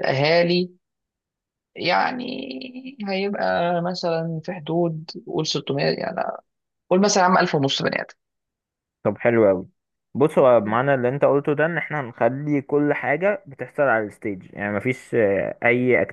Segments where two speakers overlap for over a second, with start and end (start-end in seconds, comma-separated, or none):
none